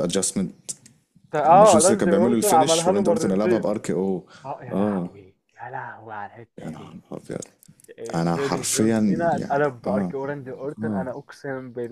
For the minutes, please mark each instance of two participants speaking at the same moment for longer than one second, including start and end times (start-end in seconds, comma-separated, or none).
1.4-3.8, 8.1-10.1